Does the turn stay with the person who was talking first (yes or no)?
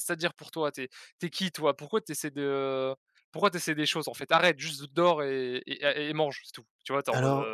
no